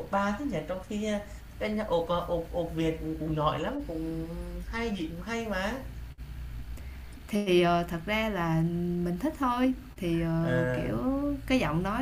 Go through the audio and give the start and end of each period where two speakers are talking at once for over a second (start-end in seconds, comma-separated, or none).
none